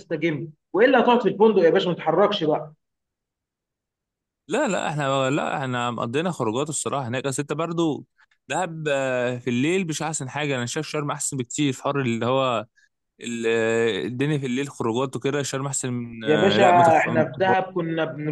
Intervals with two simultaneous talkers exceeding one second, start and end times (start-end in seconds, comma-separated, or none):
16.2-17.6